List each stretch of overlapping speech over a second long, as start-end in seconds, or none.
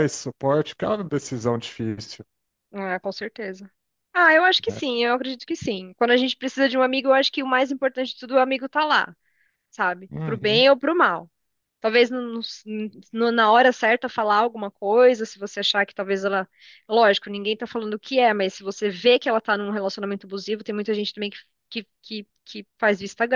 none